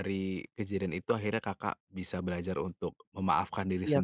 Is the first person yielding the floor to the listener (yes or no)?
yes